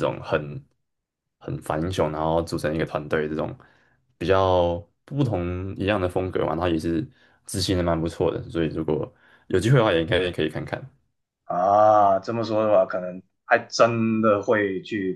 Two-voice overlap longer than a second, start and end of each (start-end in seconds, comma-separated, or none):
none